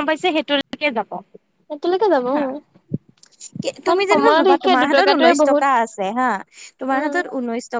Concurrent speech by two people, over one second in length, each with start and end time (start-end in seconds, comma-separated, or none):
3.9-5.6